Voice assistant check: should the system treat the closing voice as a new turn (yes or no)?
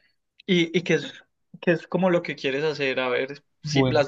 no